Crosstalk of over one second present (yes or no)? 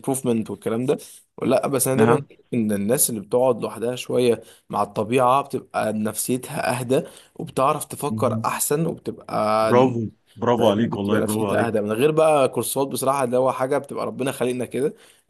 yes